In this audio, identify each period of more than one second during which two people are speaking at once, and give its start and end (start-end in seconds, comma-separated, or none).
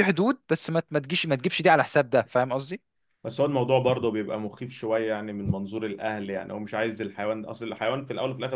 none